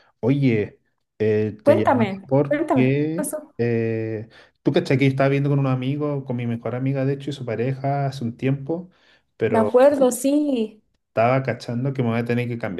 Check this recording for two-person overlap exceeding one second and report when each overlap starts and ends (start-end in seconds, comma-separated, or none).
1.6-3.5